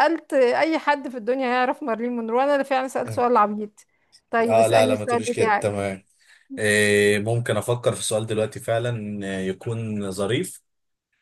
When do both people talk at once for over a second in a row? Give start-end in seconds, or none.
4.4-5.8